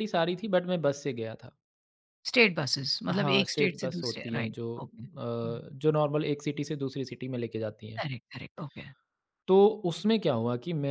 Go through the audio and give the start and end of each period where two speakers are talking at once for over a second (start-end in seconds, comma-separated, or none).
3.1-5.6